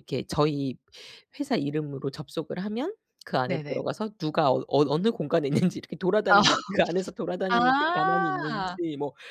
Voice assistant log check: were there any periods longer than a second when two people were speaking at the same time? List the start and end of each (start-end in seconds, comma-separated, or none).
7.5-8.8